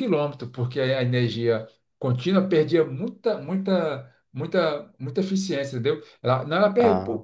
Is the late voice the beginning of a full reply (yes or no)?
no